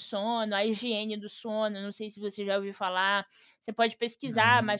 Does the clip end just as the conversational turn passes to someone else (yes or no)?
no